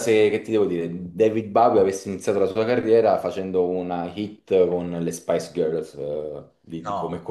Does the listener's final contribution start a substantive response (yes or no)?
yes